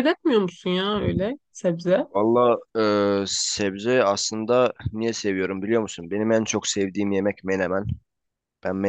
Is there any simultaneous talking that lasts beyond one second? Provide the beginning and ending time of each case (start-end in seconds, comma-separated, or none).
none